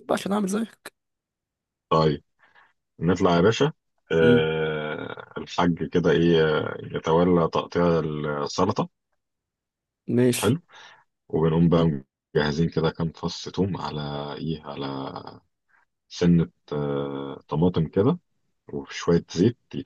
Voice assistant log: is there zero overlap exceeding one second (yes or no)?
yes